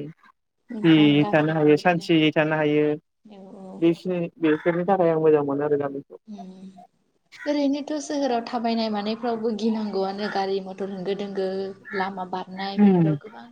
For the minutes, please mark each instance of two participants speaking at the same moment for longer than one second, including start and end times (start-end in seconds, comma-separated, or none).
0.8-2.3